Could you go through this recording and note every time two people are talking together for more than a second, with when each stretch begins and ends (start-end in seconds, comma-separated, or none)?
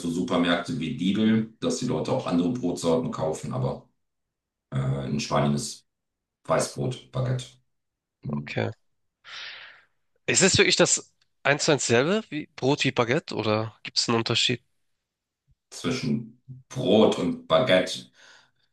none